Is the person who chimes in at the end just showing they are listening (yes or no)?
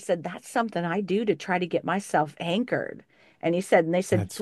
yes